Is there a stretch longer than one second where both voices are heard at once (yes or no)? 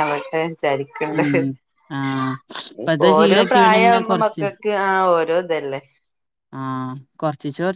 yes